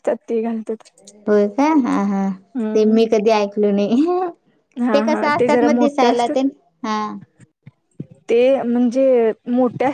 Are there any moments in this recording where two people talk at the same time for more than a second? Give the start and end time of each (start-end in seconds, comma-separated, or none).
4.9-6.5